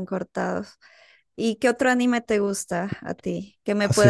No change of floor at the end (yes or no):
no